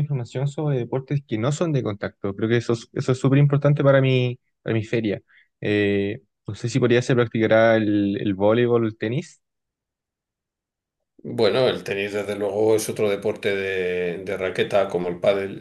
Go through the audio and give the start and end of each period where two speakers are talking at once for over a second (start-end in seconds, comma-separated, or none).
none